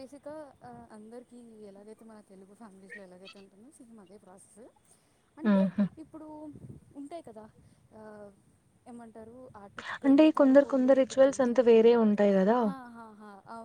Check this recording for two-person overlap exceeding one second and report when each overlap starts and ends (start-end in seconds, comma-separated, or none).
10.1-12.0